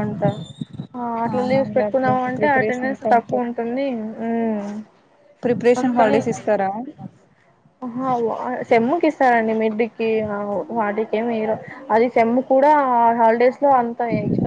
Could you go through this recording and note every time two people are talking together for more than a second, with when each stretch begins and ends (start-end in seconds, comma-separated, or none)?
1.4-3.5